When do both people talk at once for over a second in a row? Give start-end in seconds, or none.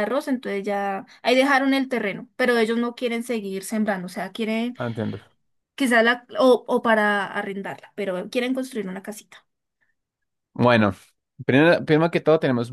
none